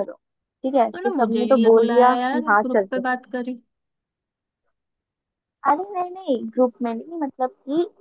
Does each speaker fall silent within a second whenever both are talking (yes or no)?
no